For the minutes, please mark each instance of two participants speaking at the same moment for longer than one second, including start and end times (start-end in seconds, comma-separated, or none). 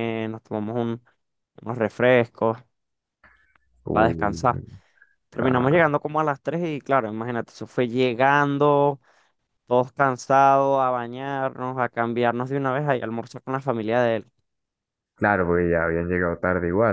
none